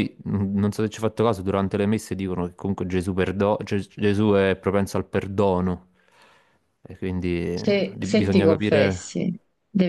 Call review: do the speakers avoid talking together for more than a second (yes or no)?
no